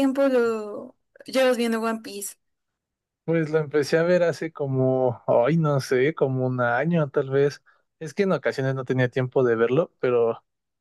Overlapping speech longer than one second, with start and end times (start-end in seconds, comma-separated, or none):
none